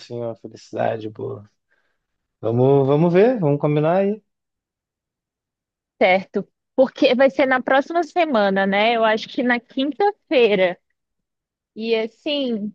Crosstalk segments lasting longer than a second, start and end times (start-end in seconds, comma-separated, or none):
none